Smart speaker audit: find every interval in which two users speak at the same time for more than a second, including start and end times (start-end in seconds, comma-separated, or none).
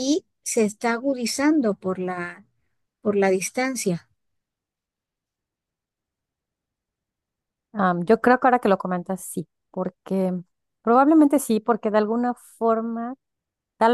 none